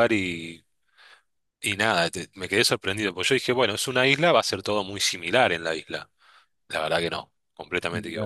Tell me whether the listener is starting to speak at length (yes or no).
no